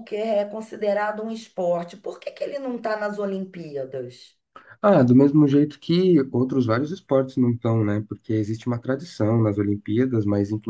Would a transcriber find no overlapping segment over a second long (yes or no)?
yes